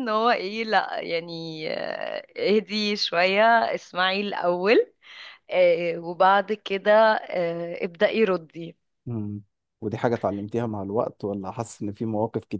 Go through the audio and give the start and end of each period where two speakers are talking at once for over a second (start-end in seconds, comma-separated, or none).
none